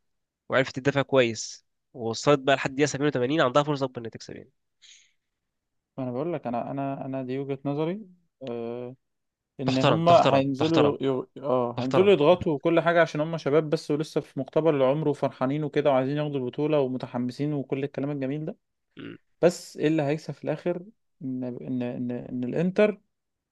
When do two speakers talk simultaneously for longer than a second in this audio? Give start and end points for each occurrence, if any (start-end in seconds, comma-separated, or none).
9.6-11.0